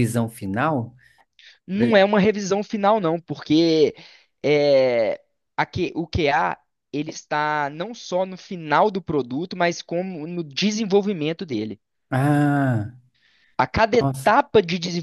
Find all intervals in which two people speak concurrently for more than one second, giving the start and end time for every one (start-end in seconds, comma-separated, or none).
none